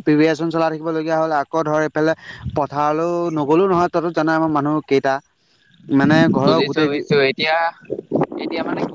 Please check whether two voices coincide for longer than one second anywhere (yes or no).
no